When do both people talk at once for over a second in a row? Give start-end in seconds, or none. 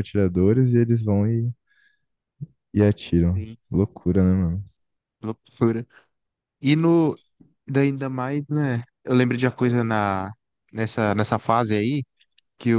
none